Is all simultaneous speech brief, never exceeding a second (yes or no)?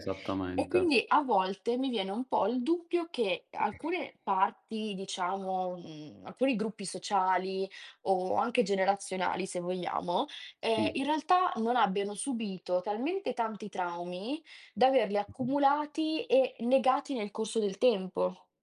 yes